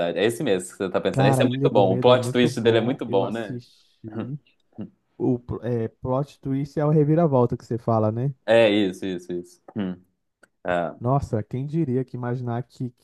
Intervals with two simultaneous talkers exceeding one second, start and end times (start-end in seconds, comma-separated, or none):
1.1-3.6